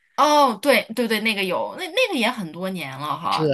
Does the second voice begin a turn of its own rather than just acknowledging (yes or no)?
yes